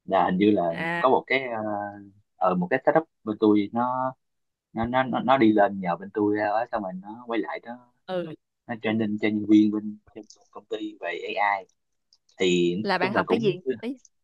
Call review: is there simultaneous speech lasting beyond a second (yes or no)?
no